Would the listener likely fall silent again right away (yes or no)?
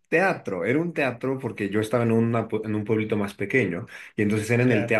yes